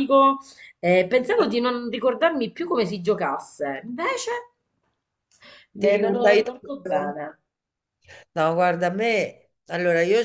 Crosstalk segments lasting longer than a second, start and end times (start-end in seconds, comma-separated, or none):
5.8-7.2